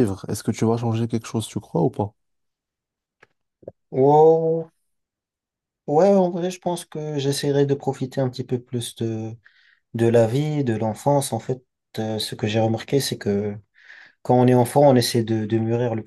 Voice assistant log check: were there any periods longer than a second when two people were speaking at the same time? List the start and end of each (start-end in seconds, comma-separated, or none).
none